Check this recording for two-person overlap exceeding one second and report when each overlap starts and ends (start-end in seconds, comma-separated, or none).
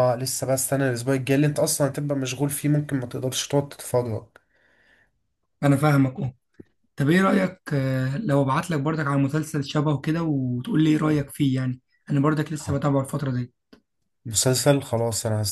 none